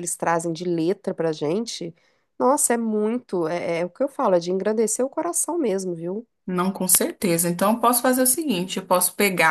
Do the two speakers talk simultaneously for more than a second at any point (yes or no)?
no